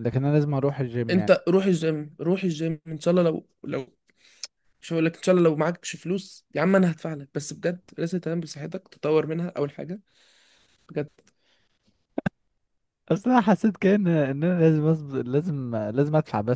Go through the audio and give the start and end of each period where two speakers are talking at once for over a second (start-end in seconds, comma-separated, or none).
none